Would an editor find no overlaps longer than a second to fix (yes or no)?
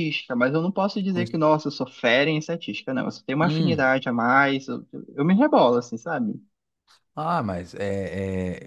yes